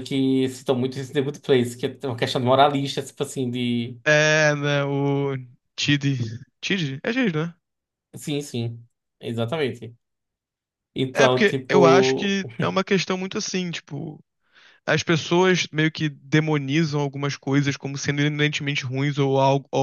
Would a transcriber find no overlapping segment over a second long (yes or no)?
no